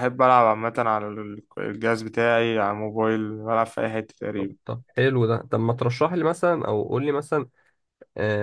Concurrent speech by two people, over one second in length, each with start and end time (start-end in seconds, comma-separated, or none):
none